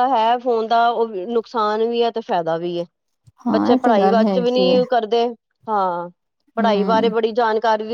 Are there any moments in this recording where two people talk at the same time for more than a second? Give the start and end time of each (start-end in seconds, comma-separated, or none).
3.5-4.8